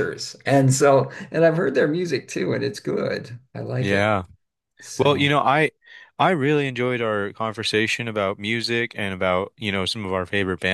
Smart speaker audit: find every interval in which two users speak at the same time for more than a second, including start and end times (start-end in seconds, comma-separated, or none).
none